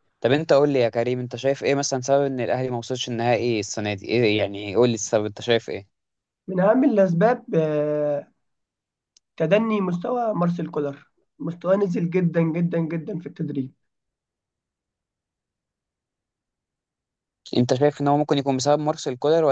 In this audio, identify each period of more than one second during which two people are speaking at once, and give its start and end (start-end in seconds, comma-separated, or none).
none